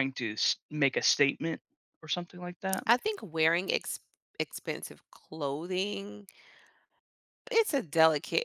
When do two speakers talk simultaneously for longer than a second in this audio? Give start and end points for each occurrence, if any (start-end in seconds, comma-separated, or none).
none